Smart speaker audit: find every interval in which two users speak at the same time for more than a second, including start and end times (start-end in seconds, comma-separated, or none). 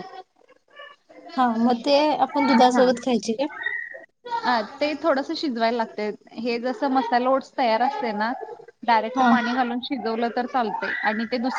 none